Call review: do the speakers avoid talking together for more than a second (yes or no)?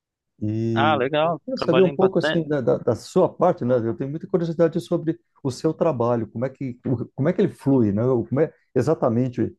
no